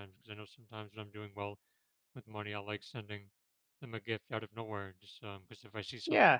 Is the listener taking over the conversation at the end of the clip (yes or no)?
yes